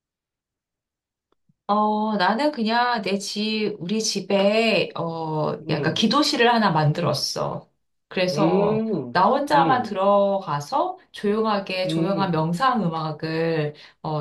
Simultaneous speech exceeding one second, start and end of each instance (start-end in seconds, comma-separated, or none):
8.3-10.0